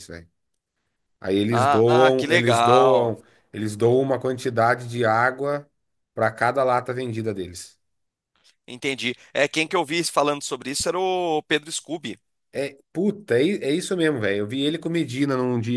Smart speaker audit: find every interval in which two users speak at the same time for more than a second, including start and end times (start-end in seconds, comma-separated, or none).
1.5-3.2